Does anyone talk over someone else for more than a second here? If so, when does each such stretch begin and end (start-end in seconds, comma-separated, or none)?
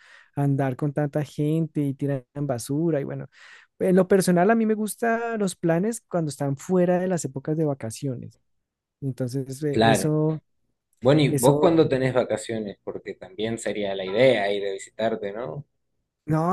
none